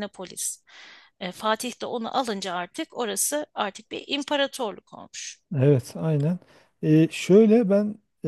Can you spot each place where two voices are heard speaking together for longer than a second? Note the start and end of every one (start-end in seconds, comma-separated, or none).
none